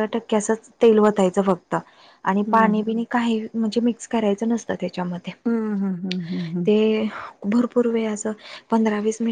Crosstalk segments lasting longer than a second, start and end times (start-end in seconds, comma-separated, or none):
none